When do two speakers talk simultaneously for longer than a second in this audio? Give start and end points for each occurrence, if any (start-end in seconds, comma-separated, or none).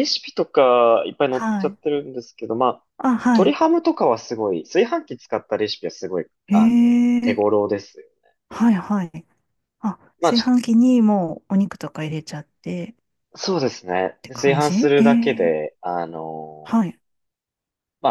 14.2-15.6